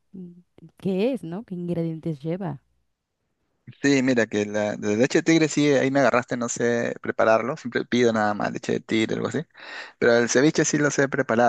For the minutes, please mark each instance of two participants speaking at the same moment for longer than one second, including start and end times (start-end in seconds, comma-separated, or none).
none